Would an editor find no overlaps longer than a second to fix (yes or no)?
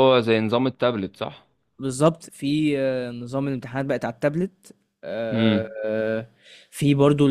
yes